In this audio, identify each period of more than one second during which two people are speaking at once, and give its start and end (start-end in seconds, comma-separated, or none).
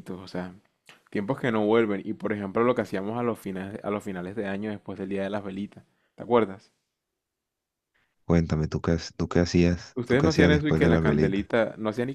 9.9-11.5